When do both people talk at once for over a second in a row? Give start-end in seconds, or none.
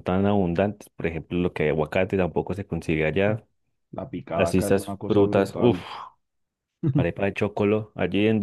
4.3-5.8